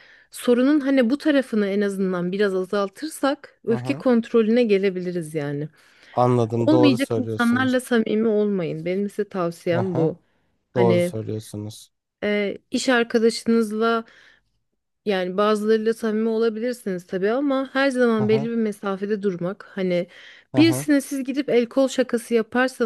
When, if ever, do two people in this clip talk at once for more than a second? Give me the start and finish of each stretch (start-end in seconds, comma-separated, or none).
6.6-7.8